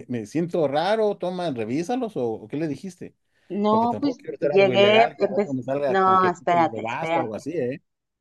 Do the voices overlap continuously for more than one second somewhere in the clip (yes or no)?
yes